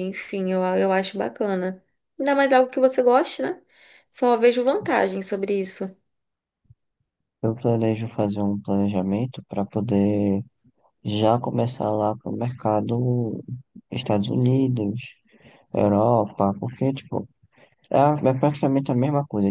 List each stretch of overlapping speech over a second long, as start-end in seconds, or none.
none